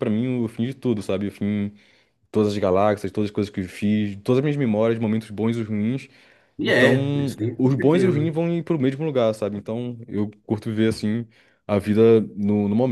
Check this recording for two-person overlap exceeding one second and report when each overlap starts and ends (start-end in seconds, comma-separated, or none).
6.6-8.3